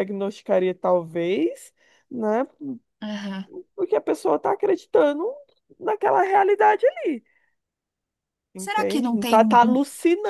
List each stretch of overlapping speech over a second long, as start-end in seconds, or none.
8.6-9.8